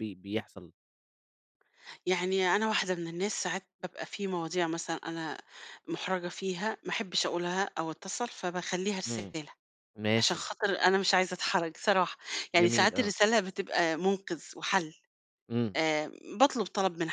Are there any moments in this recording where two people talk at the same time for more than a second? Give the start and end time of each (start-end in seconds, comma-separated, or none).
none